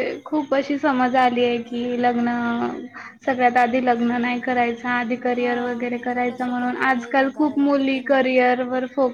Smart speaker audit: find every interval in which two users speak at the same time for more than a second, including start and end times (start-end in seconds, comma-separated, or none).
5.3-8.2